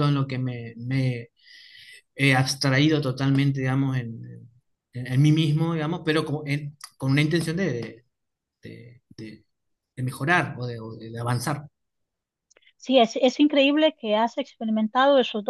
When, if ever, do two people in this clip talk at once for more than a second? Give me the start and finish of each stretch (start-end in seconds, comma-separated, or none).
none